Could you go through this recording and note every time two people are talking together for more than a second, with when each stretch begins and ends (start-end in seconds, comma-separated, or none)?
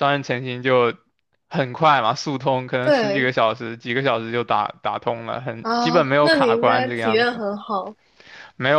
5.6-7.4